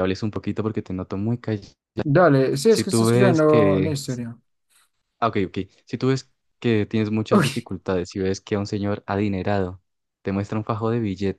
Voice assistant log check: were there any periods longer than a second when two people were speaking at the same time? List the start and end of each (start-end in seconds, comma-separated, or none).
2.7-3.9